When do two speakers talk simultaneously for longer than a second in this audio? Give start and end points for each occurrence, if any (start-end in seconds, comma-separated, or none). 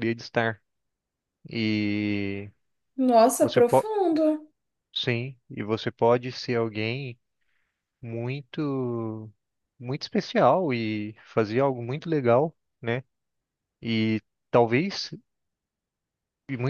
none